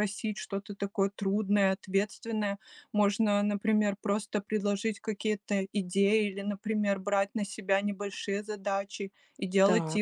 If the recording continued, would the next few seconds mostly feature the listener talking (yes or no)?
no